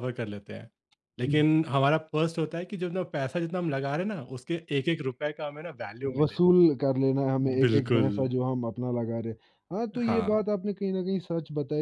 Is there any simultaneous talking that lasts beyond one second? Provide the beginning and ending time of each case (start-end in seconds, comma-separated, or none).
none